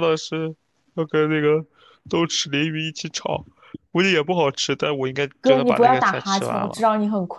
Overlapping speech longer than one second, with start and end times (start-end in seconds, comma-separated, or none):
5.4-6.8